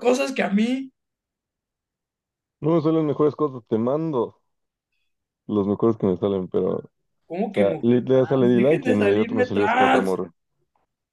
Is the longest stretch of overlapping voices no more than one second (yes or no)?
no